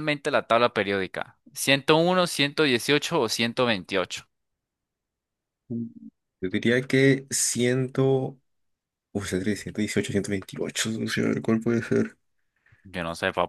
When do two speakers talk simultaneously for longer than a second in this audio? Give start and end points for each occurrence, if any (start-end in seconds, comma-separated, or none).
none